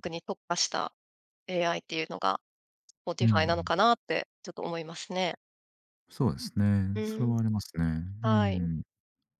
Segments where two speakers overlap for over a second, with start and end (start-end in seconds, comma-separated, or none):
none